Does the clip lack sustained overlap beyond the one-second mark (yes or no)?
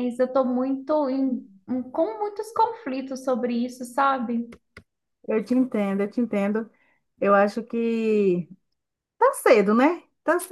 yes